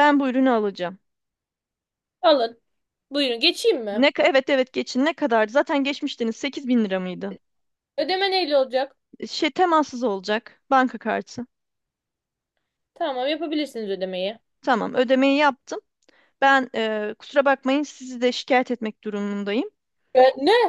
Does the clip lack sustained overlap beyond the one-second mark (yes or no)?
yes